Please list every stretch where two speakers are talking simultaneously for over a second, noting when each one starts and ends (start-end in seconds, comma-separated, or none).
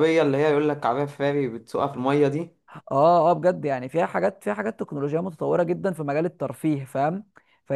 none